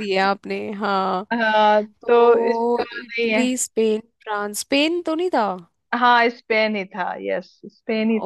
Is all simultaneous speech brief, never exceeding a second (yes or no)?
no